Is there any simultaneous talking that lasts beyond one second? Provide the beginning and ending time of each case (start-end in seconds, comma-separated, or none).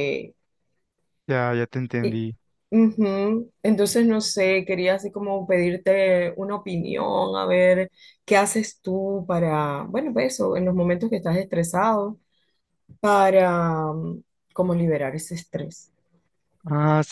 none